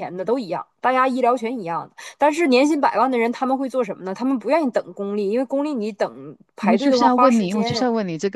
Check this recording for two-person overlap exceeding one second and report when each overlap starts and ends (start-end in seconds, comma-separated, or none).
6.6-7.8